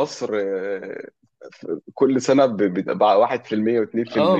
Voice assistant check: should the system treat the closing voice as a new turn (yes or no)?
yes